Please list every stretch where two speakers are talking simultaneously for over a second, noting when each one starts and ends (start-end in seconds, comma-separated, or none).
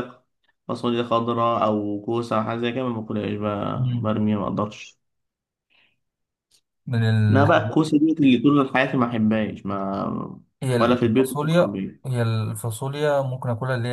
10.8-12.0